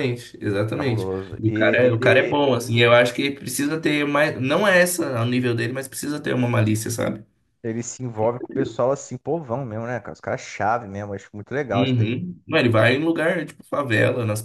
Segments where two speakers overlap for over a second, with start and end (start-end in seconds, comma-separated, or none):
0.7-2.3